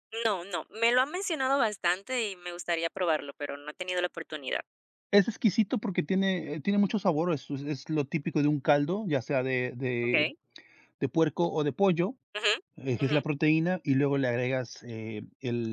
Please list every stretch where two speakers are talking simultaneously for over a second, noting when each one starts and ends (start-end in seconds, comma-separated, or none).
none